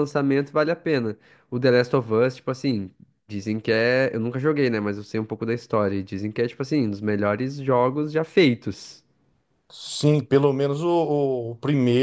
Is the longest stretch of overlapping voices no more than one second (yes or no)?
yes